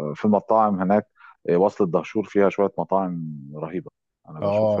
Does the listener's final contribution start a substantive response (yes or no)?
yes